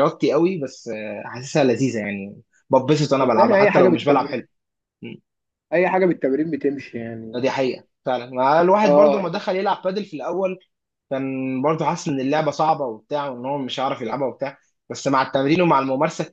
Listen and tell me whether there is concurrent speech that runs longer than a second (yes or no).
yes